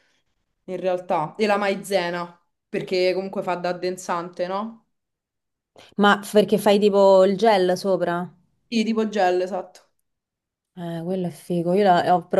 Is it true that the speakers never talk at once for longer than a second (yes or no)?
yes